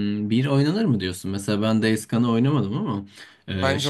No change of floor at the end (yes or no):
yes